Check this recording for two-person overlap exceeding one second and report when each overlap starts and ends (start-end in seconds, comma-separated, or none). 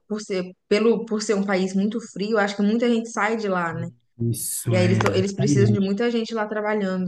4.6-6.0